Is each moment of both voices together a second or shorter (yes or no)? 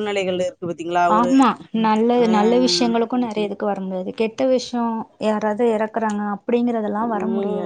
yes